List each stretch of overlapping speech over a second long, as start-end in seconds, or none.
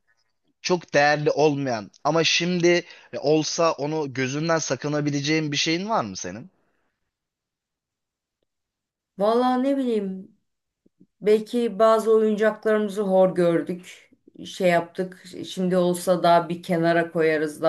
none